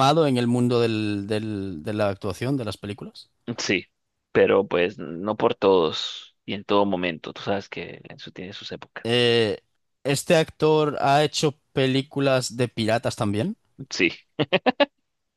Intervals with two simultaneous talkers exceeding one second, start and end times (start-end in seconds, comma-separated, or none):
none